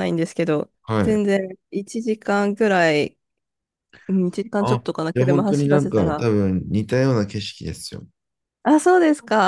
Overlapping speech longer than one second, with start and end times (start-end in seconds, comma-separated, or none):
4.6-6.3